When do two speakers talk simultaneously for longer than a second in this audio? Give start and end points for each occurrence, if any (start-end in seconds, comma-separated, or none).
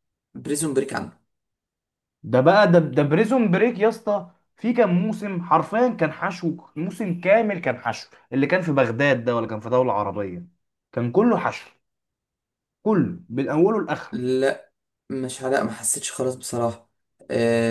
none